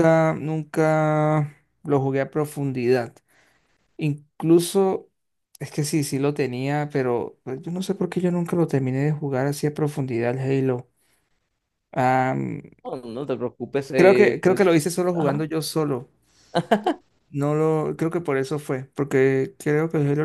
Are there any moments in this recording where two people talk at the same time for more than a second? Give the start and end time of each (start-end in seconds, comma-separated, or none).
13.9-15.4